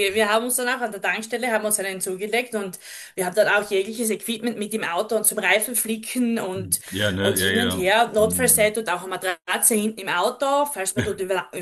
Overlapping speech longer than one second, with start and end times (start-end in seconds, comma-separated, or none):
7.2-8.8